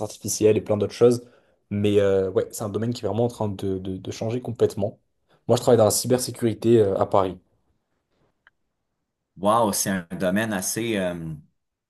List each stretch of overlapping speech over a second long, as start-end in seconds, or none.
none